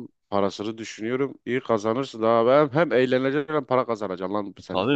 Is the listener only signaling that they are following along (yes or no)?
no